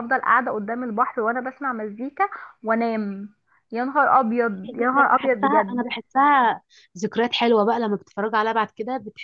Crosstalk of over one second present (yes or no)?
yes